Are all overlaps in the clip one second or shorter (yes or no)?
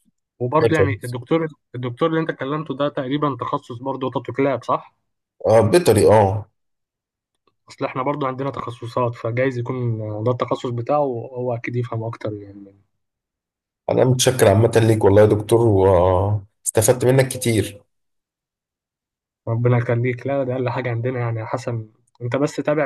yes